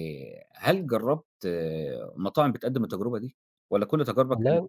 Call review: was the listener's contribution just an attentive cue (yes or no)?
yes